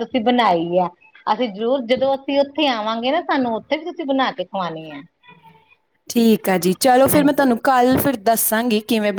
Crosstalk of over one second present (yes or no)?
no